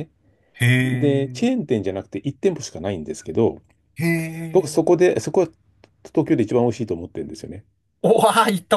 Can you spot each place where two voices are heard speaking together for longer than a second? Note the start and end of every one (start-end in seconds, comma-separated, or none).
none